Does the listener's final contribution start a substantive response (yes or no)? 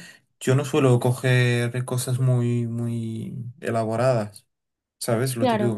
no